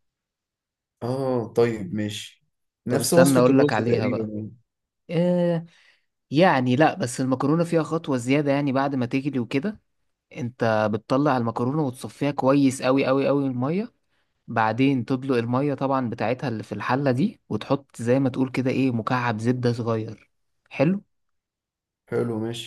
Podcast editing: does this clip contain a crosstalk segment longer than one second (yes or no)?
yes